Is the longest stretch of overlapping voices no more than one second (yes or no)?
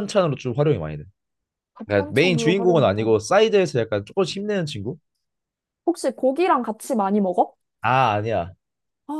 no